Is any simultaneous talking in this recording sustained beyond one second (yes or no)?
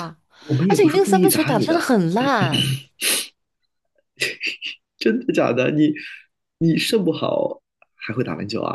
yes